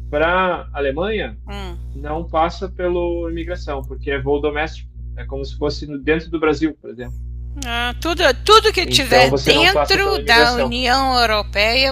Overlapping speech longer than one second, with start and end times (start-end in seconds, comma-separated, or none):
8.8-10.8